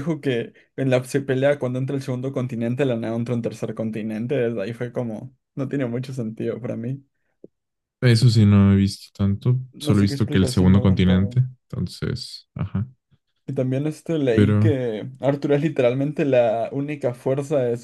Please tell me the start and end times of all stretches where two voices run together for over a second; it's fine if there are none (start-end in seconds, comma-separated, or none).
9.7-11.4